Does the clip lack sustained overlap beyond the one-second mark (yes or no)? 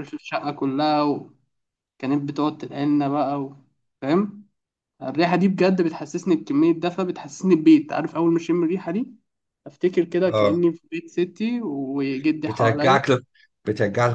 yes